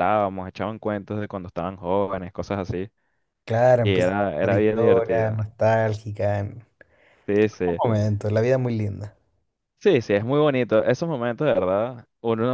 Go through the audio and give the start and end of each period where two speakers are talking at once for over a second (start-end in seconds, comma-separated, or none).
3.8-5.4